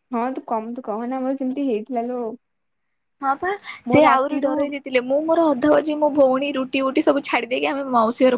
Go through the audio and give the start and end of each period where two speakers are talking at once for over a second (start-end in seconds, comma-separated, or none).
none